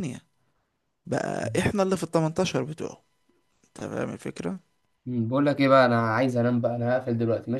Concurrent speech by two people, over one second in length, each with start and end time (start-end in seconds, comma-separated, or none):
none